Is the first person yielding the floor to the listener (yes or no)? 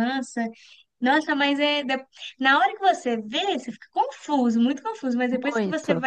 no